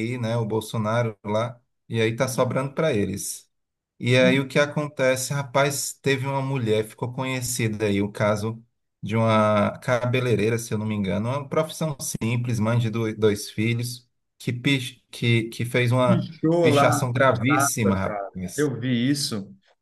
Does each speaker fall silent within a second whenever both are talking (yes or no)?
no